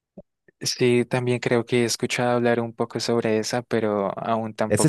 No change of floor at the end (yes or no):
no